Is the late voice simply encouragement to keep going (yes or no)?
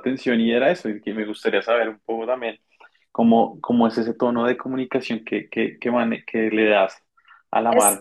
yes